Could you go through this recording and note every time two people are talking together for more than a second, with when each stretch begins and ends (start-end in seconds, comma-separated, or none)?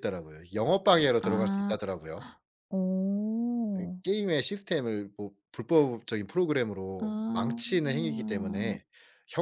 7.0-8.3